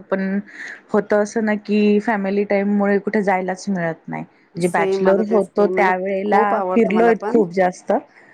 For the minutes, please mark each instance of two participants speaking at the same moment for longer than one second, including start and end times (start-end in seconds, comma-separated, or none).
4.6-7.4